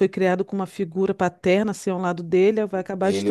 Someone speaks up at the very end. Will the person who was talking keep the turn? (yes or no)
no